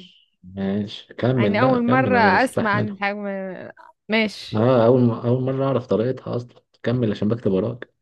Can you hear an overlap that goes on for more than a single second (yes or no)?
yes